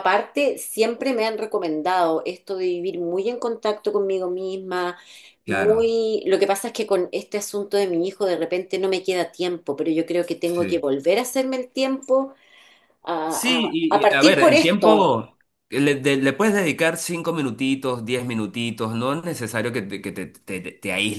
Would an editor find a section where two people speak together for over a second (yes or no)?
yes